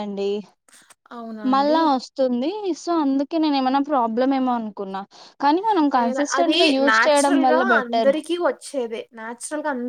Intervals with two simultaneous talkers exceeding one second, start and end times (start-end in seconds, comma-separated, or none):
6.0-8.1